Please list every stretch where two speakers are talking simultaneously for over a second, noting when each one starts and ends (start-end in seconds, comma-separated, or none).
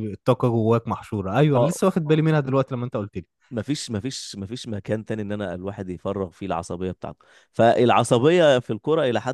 none